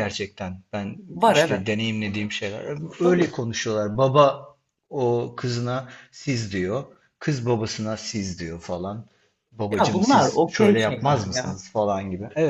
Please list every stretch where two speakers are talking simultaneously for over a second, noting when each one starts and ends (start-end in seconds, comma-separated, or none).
9.7-11.6